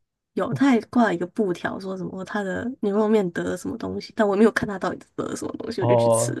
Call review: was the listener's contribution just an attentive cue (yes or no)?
no